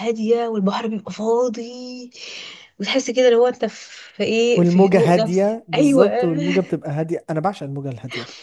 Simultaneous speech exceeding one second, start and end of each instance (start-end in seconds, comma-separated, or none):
4.6-6.1